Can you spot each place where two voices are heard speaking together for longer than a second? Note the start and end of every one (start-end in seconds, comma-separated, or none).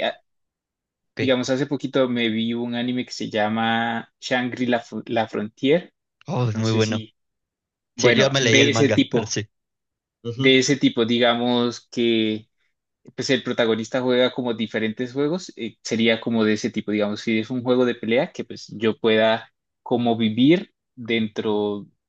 8.0-9.4